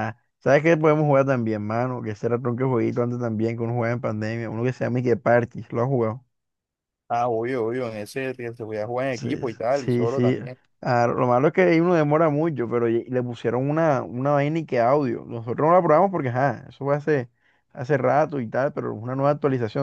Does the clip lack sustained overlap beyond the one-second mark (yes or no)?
no